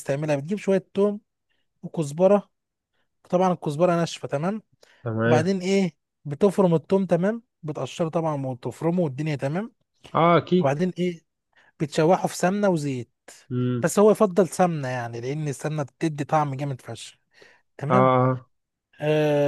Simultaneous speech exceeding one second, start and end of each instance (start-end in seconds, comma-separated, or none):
none